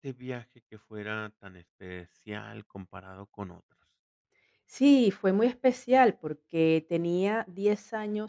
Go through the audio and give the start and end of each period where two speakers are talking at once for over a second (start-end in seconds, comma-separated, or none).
none